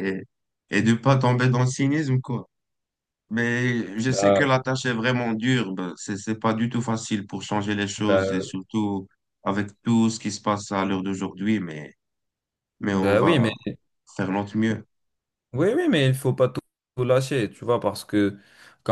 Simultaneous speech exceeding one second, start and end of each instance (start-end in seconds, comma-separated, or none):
none